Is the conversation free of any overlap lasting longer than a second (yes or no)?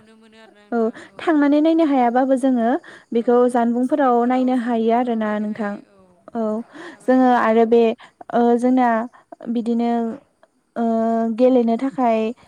no